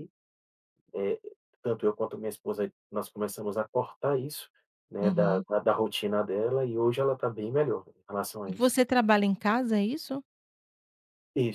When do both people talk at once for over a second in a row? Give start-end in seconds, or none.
none